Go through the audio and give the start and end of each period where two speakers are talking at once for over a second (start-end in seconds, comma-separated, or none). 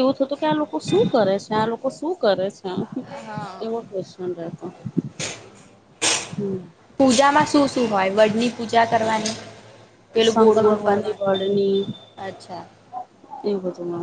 10.3-11.6